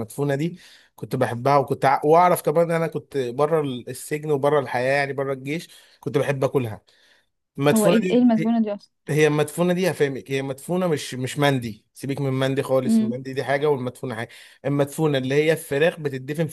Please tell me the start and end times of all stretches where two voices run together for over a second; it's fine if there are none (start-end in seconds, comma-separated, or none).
none